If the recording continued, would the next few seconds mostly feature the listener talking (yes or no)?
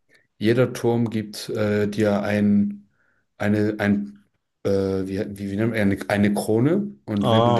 no